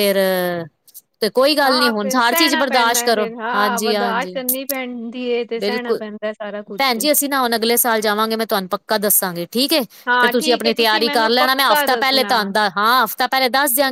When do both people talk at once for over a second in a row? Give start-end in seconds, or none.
1.6-4.3, 10.2-12.3